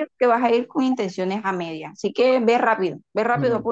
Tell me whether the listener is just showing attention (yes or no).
no